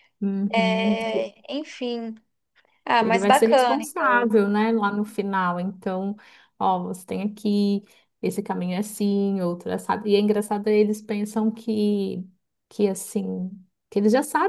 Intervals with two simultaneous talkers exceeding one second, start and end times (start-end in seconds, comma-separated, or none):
3.0-4.3